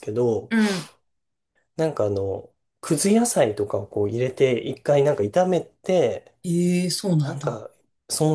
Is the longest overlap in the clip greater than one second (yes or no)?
no